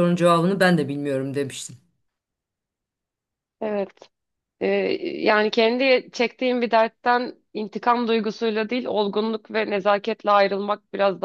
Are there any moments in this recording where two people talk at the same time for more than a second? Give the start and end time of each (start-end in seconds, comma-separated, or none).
none